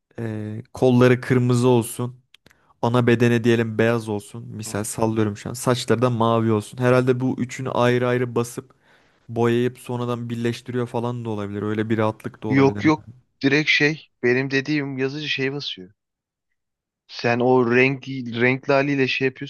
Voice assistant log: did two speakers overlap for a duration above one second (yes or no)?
no